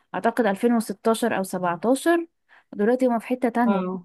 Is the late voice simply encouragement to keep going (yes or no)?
yes